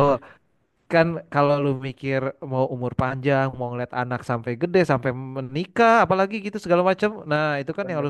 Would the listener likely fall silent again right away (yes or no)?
yes